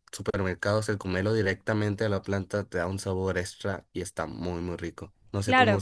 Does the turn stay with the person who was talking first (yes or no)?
no